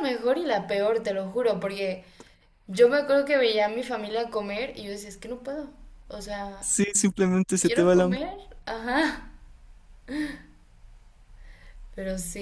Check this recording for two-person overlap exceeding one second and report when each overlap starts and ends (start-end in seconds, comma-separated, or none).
none